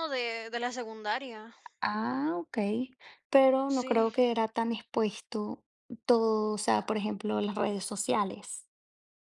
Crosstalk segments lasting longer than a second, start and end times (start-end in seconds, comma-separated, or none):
none